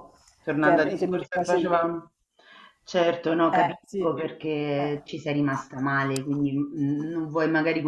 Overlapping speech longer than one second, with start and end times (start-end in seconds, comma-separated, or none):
0.6-1.8, 3.5-4.9